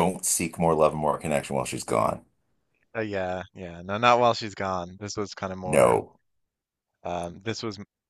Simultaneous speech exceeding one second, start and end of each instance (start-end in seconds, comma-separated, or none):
none